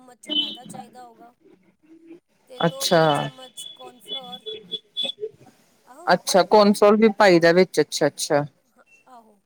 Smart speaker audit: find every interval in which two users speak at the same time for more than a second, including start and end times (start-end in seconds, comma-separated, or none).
none